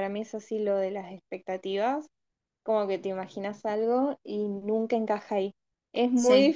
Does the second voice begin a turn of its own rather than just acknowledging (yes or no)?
no